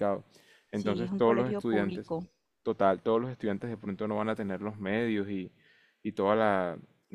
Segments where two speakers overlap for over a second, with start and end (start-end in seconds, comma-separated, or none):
0.7-2.1